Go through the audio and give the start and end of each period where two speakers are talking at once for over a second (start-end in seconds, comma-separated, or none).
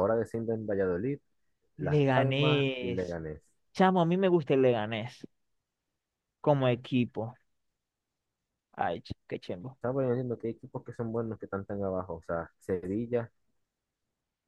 1.8-3.2